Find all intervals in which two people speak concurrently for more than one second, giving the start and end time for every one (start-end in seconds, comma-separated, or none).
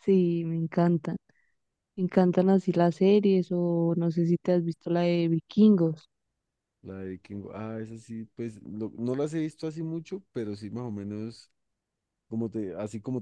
none